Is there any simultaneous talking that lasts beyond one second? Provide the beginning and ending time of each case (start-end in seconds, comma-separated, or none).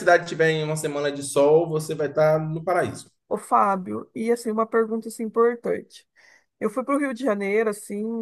none